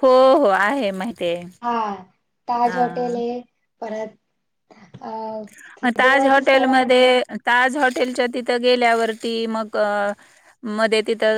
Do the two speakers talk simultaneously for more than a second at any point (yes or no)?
yes